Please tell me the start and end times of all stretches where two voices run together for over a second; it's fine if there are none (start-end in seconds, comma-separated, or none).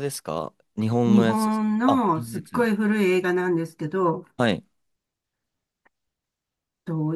1.1-2.7